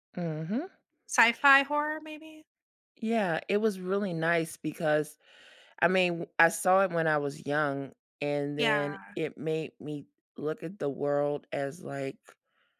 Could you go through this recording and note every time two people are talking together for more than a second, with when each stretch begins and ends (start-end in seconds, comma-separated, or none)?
none